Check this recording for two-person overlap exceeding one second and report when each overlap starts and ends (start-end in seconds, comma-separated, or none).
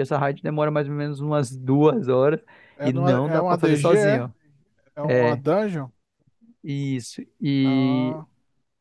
2.8-4.3